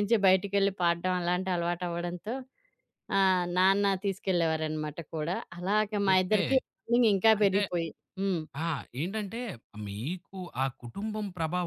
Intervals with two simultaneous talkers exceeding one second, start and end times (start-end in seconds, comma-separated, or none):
none